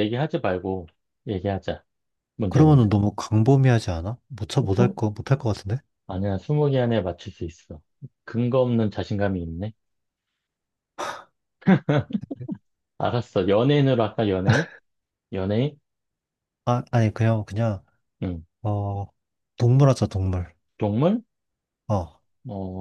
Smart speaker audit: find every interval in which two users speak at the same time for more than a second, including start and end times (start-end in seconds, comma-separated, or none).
none